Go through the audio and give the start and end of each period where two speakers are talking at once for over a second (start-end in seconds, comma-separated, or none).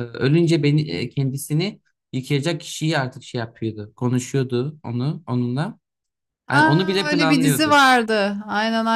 6.5-7.8